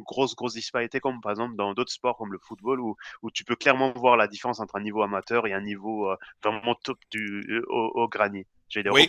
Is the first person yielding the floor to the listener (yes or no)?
yes